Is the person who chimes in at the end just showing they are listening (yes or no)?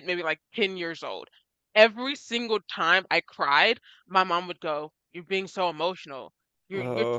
yes